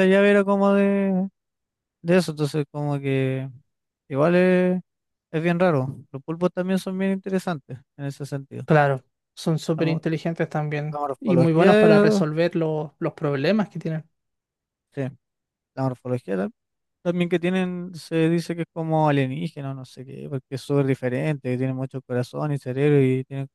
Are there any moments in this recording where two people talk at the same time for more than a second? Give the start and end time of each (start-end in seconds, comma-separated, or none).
10.9-12.2